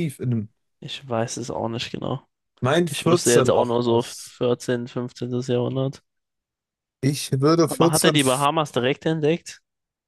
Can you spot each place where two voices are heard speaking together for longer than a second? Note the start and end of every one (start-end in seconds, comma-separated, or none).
2.9-4.4